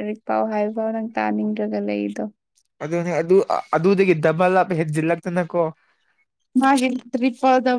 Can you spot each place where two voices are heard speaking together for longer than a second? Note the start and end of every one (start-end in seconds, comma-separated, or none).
none